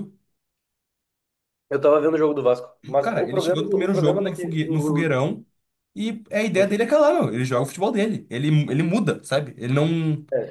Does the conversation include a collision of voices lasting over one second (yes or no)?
yes